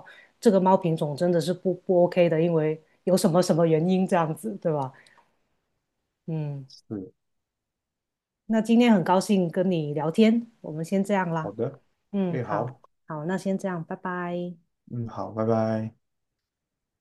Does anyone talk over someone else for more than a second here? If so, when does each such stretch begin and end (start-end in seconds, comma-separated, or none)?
none